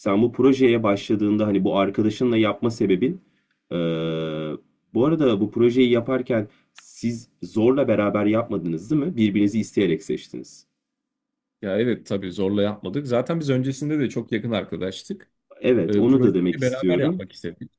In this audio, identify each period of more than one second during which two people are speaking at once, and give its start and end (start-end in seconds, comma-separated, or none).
15.8-17.2